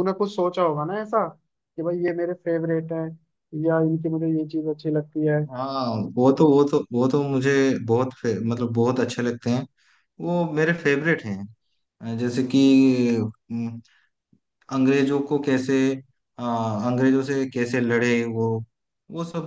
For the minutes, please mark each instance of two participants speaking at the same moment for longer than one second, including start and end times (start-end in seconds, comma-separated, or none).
none